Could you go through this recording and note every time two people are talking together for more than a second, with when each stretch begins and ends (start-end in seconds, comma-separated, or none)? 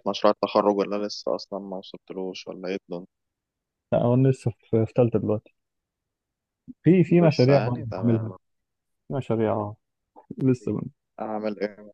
7.1-8.3